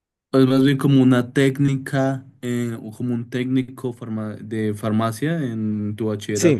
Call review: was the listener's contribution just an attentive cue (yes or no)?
no